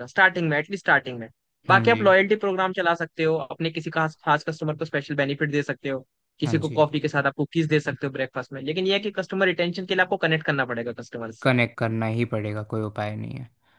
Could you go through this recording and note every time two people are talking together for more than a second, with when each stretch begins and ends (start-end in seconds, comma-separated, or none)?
none